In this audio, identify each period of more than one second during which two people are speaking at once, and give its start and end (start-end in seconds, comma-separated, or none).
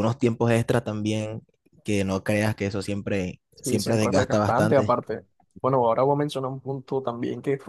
3.6-5.0